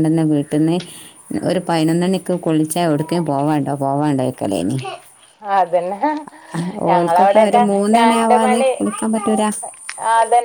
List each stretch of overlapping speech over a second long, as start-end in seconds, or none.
6.9-8.7